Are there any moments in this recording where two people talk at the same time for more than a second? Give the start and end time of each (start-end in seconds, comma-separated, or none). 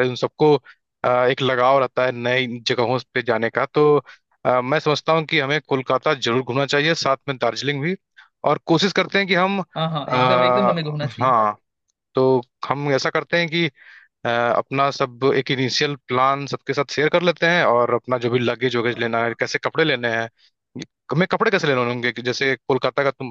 10.1-11.3